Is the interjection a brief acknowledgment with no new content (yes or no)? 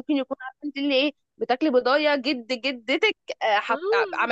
no